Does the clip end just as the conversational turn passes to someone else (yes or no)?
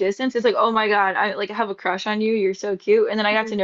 no